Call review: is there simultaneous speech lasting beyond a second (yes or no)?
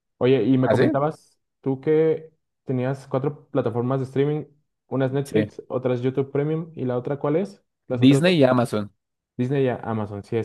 no